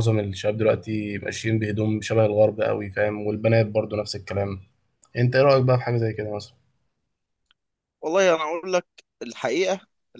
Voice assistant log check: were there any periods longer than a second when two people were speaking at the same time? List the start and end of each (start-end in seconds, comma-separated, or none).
none